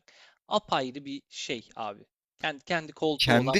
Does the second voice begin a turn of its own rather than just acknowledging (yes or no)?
yes